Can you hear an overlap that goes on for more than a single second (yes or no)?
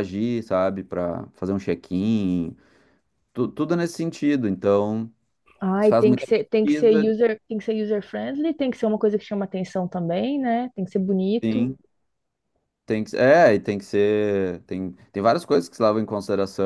yes